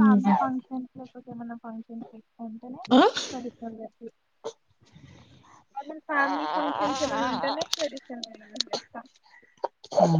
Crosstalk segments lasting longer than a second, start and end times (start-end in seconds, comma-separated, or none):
6.2-7.6